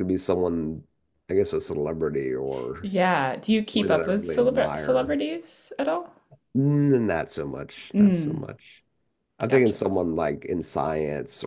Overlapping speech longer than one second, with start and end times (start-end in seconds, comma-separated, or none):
3.7-5.2